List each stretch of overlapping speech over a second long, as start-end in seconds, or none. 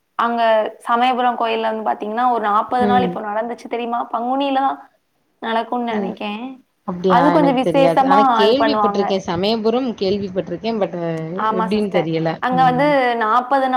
7.4-9.0